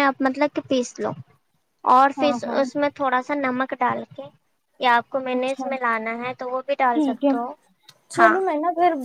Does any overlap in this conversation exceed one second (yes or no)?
no